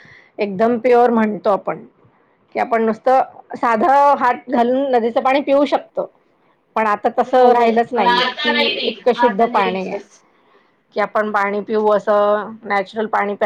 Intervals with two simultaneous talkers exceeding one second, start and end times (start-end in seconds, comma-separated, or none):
7.3-10.0